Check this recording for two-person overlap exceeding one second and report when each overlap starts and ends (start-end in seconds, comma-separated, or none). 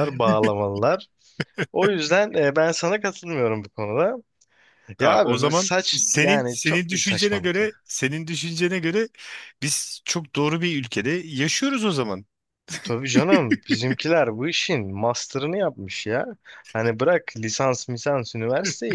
5.0-7.7